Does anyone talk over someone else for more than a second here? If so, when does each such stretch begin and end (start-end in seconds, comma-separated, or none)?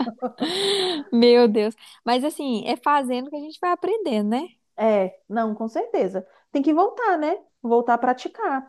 none